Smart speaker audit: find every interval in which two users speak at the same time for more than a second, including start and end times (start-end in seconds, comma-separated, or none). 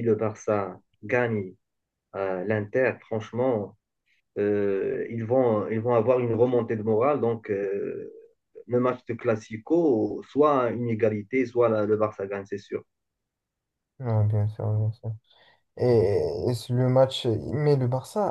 none